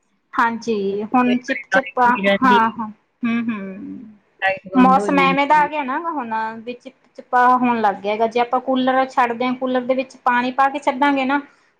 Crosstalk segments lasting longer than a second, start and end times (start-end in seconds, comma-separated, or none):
0.9-2.6